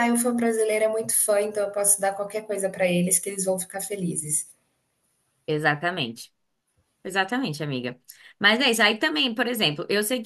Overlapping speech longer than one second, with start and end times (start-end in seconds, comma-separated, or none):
none